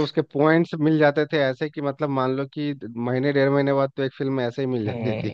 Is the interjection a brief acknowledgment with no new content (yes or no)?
no